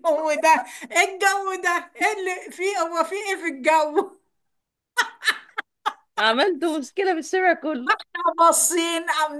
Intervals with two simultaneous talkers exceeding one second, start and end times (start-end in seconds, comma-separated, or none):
none